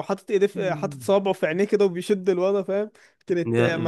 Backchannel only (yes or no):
yes